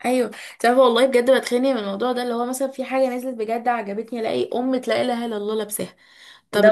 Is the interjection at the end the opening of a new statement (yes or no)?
yes